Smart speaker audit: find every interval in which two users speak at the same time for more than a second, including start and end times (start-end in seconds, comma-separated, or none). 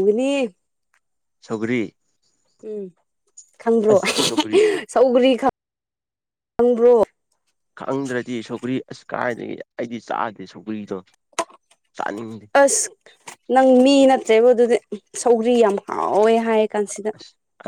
none